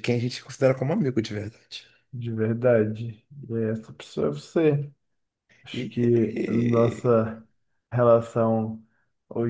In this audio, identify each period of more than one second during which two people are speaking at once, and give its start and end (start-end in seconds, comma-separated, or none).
5.7-7.2